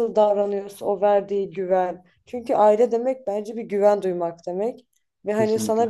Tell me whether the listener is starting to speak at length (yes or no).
no